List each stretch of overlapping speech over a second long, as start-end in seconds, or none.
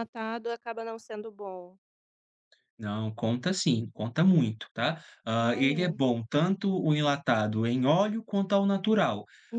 none